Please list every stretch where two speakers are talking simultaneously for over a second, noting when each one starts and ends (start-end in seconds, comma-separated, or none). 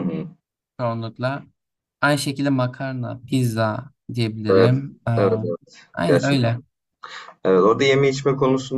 none